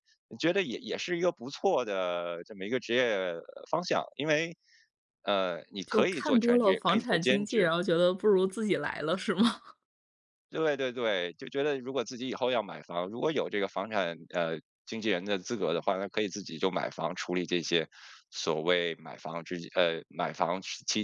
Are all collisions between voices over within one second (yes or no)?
no